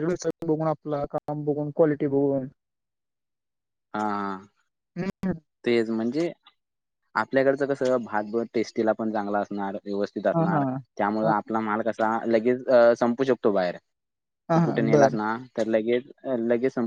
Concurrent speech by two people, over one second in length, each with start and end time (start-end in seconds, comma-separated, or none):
none